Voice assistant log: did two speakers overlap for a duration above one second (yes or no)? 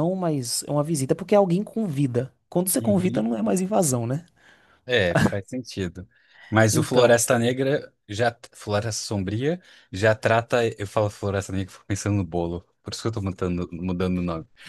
no